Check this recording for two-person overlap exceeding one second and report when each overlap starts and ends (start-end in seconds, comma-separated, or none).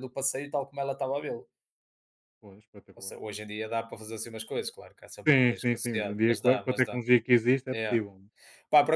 5.3-7.0